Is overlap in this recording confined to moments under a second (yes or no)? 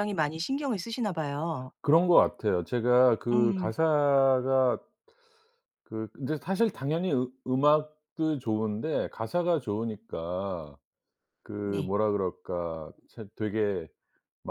yes